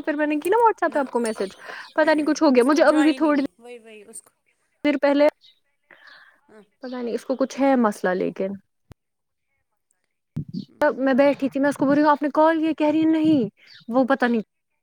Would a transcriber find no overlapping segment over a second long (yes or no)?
no